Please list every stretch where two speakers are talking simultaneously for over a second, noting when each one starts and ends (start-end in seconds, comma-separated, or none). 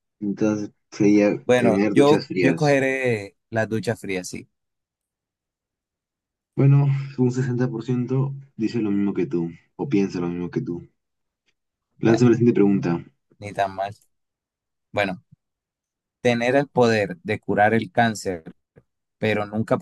1.4-2.8